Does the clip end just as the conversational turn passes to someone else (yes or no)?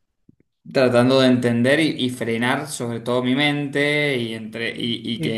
no